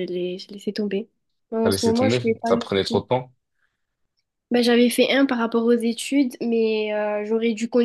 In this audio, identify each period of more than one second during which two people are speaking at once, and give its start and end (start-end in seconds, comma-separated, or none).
1.6-3.0